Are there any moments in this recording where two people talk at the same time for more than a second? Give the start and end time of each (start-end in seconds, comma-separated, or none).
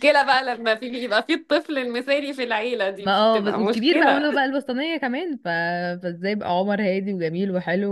3.0-4.3